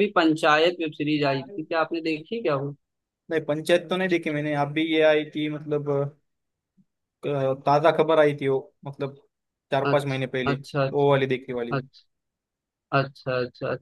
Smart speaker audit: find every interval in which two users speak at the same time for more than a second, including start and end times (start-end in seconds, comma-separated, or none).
9.9-11.8